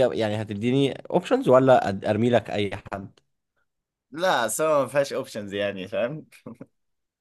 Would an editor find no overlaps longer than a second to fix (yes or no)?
yes